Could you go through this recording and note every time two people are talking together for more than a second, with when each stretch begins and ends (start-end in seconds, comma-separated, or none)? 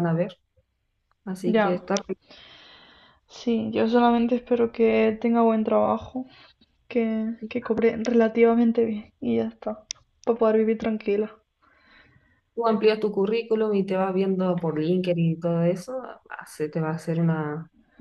none